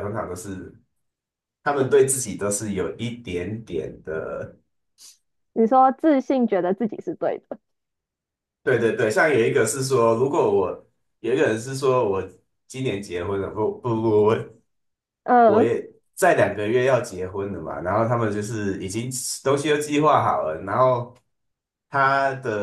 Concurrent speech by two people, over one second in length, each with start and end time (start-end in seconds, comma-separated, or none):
none